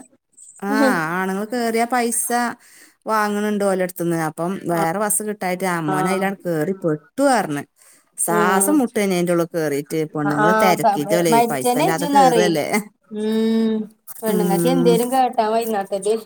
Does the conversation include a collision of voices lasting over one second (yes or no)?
yes